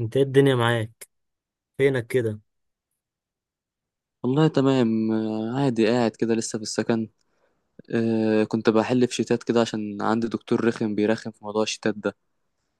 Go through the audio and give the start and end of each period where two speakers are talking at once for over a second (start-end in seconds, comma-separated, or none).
none